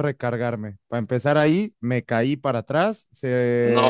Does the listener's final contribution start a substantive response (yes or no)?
no